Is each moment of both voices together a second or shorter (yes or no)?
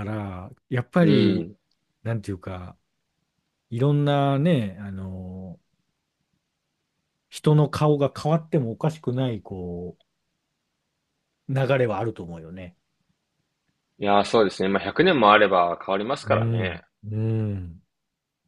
yes